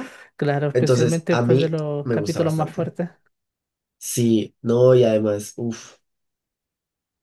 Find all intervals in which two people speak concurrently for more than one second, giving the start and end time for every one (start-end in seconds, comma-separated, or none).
0.7-3.0